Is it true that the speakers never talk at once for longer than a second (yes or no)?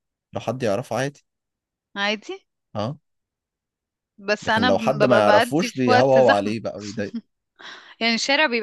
no